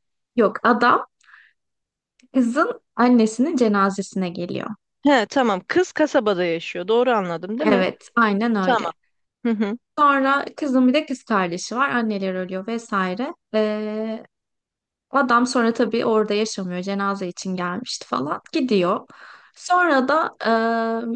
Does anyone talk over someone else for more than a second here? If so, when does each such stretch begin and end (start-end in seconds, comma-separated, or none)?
none